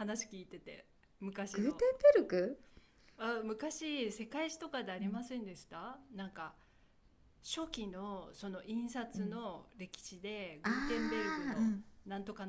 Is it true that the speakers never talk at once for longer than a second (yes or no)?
no